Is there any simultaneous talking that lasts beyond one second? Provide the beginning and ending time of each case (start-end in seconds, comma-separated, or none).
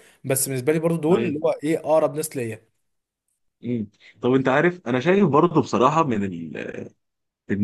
none